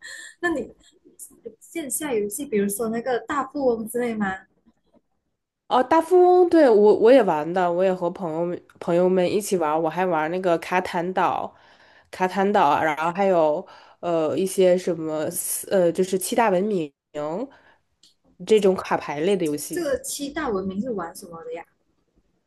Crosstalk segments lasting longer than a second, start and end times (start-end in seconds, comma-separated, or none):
none